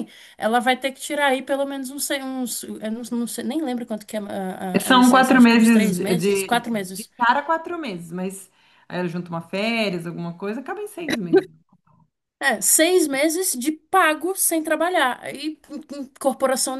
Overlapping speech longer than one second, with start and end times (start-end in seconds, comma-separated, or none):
4.8-7.1